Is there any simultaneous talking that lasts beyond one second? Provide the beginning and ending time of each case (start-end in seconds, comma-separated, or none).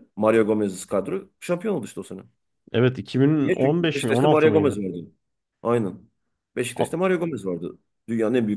3.4-4.8